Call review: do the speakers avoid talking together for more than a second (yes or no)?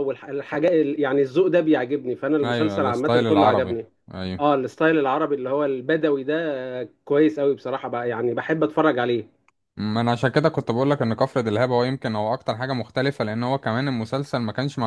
no